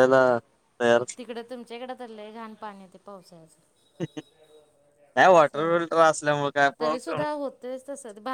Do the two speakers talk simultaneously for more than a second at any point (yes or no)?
no